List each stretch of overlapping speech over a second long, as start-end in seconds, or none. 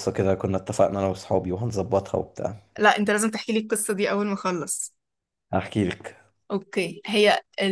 none